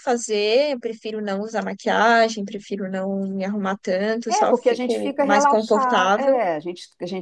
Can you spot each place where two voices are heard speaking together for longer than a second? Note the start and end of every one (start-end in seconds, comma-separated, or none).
4.3-6.4